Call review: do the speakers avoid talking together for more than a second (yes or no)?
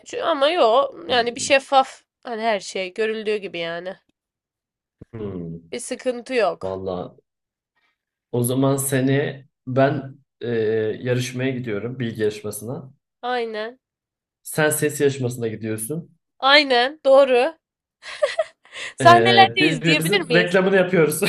no